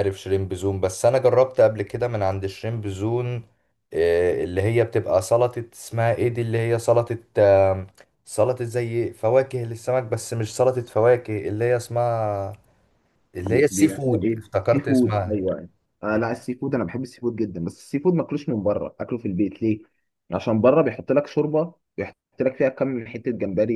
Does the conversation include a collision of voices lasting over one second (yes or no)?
yes